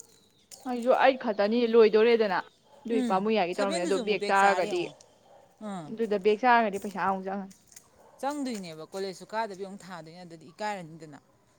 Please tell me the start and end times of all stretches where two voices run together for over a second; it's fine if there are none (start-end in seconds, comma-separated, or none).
2.9-4.8